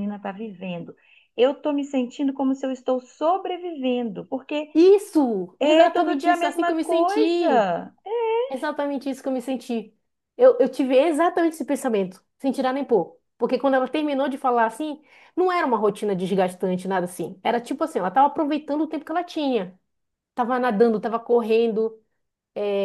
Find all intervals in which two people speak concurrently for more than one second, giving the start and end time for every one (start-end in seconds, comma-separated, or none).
5.6-7.7